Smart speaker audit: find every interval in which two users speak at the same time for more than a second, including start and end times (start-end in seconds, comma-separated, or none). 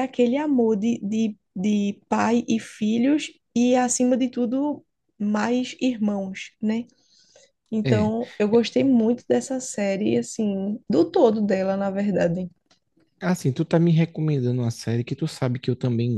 none